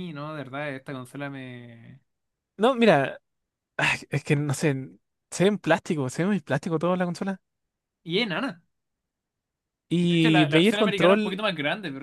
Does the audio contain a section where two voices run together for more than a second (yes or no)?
yes